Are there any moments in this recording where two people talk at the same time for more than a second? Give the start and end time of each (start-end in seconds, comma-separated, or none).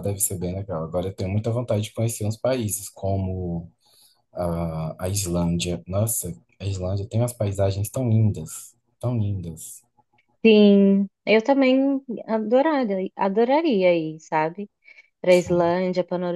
none